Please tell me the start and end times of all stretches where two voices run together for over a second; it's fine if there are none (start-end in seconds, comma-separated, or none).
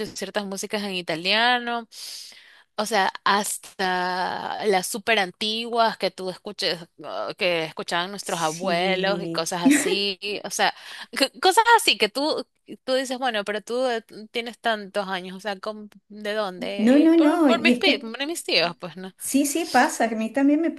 8.2-9.4, 16.8-18.1